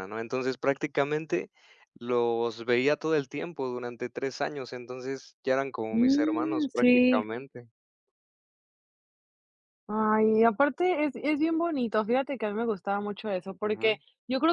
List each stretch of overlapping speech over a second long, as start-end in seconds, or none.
5.9-7.2